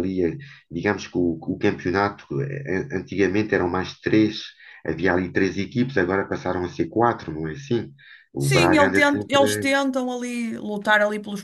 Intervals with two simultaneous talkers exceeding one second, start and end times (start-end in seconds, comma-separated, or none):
8.4-9.7